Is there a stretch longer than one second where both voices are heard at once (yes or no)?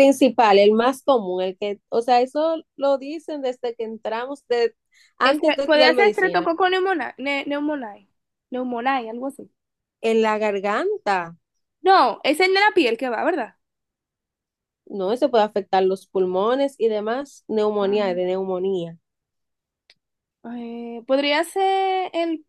yes